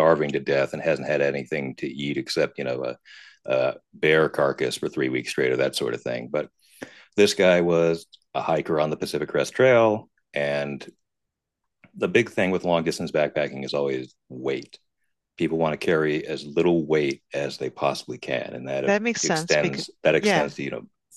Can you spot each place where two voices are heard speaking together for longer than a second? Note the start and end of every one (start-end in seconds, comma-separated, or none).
18.8-20.5